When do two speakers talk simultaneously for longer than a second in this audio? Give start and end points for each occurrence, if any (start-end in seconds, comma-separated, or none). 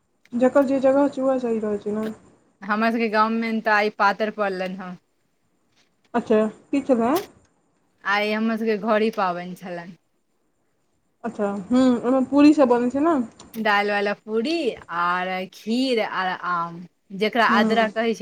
none